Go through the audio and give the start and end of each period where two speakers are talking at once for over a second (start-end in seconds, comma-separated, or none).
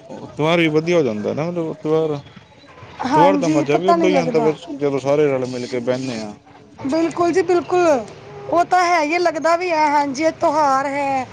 3.1-4.5